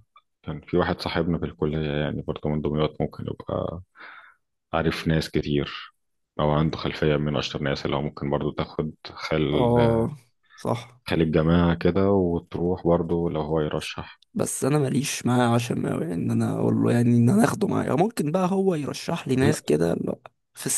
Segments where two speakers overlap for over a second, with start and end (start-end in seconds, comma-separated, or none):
none